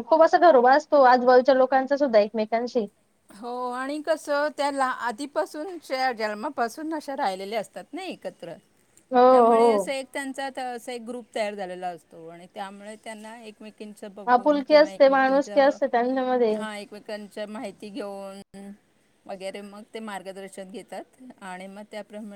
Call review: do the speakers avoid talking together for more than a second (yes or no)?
no